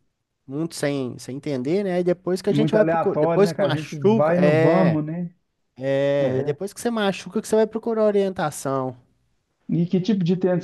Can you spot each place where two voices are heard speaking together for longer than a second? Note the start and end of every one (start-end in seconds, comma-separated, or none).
2.5-5.0